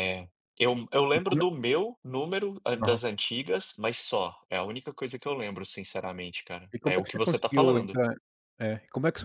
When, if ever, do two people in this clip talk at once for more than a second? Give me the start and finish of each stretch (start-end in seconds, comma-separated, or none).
6.7-8.0